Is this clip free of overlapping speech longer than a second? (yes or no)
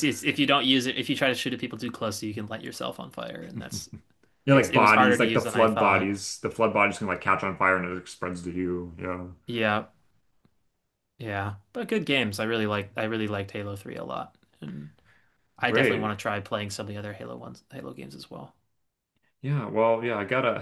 no